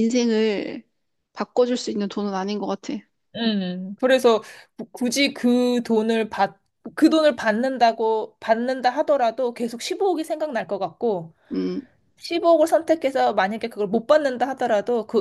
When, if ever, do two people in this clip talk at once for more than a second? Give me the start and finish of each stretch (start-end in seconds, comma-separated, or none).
none